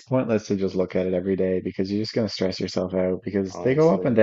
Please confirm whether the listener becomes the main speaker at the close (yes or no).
no